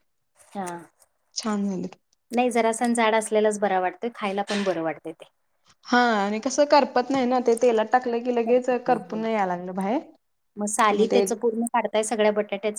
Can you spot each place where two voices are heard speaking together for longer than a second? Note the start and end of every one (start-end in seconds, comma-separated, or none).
none